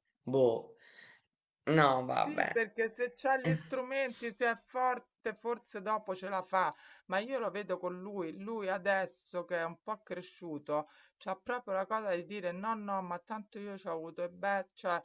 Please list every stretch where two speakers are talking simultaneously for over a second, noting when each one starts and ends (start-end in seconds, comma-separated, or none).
none